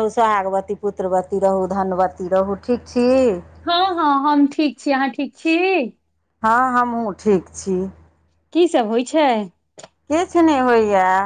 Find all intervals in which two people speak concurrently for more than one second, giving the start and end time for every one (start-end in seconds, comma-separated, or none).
none